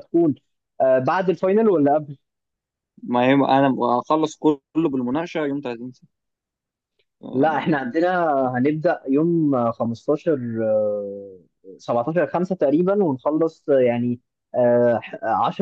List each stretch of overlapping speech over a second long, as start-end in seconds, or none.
none